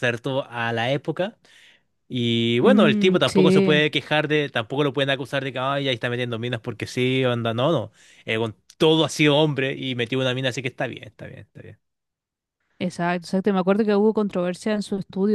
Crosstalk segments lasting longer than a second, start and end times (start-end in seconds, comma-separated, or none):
2.6-3.8